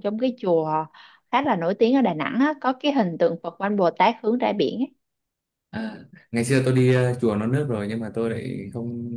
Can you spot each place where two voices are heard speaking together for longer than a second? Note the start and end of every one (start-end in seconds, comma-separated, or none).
none